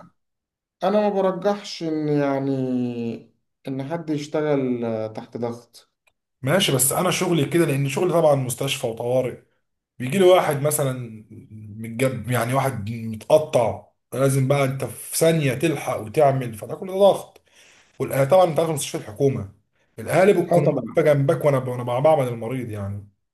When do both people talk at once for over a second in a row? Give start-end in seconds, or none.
none